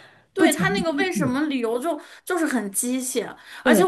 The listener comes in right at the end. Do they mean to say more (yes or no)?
no